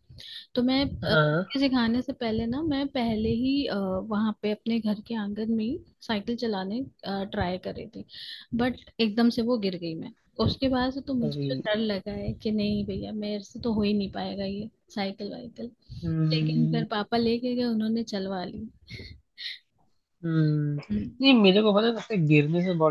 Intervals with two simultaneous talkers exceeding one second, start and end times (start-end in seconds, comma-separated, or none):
none